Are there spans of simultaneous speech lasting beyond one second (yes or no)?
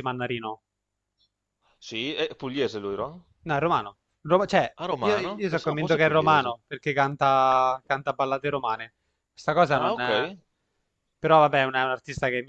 yes